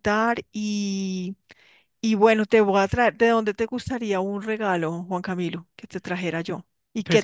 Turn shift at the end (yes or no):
yes